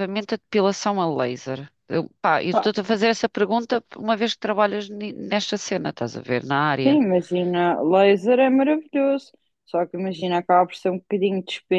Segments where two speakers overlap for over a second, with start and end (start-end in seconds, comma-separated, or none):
none